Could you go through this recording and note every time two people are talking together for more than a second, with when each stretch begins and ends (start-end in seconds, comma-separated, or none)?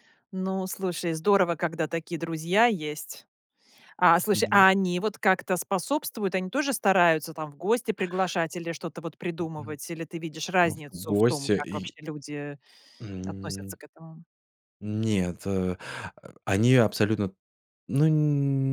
10.6-11.9